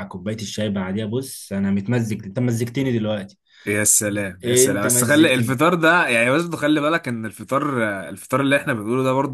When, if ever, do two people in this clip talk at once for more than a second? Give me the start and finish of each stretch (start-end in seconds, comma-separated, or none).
4.4-5.6